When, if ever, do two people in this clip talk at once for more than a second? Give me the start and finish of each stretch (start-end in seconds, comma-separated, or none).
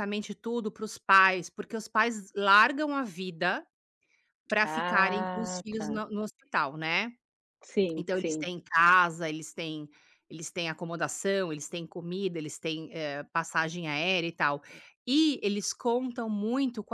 4.6-6.0